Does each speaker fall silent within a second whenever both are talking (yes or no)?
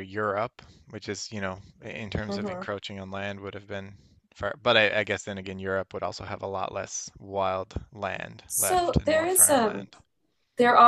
no